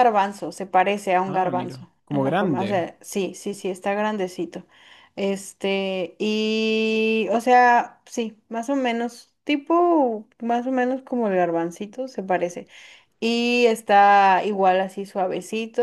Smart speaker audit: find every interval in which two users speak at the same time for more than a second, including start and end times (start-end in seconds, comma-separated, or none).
1.2-2.8